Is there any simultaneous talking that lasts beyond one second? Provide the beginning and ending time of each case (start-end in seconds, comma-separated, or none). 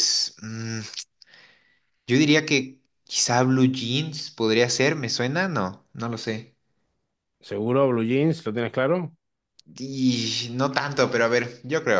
none